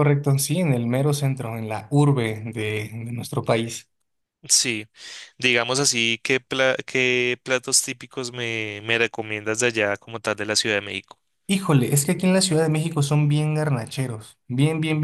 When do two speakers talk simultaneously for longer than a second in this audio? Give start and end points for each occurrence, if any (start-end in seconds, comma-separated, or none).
none